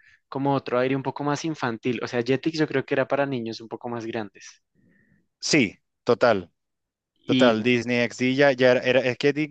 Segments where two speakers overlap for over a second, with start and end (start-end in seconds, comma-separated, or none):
none